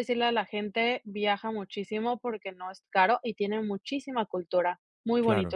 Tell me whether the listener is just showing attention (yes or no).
no